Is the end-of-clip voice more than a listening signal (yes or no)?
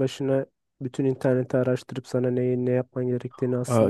yes